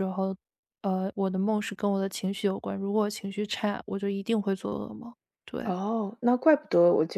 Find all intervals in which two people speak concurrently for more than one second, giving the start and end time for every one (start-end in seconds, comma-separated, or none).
none